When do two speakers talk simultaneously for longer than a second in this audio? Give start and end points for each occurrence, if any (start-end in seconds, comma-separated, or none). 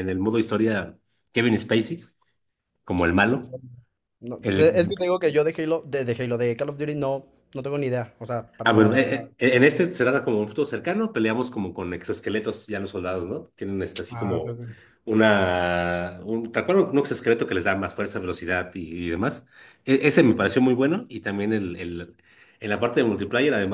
none